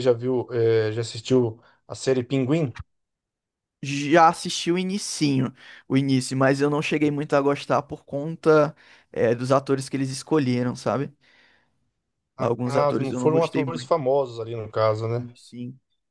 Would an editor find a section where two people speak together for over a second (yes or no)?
yes